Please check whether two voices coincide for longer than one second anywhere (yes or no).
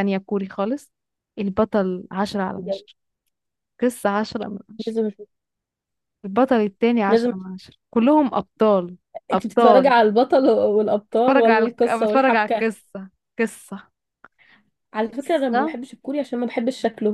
yes